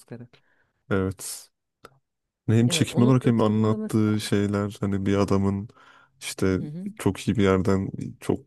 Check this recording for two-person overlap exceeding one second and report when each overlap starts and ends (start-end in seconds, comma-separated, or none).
2.7-4.3